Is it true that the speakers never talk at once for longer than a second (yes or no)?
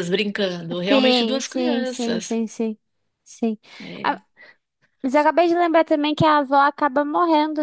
no